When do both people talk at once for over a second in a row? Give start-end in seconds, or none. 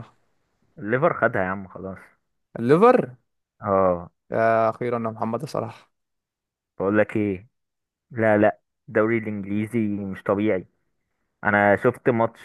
none